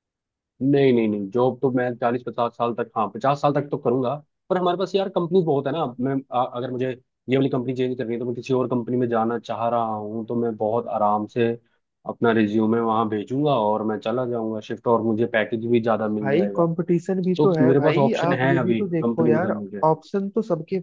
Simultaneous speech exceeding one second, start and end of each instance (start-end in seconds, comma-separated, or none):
17.4-19.8